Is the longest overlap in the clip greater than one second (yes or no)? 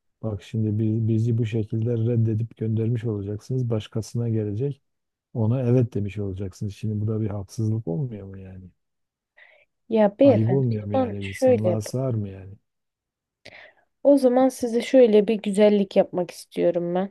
yes